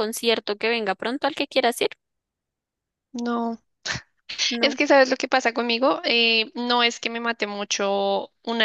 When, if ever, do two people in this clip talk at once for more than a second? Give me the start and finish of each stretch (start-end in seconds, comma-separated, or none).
none